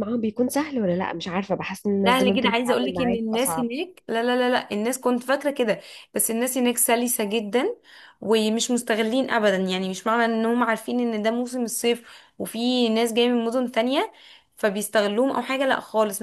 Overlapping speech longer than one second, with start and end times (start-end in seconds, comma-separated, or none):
2.0-3.7